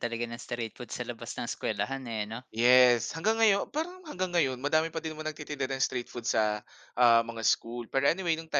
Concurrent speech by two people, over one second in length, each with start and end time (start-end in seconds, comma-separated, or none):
none